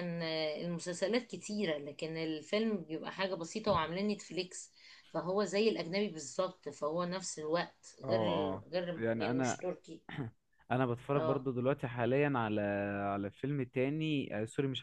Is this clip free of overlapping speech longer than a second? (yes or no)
no